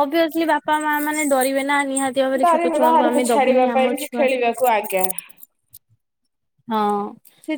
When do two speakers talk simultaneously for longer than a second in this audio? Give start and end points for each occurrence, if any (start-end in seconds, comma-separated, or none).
2.4-4.3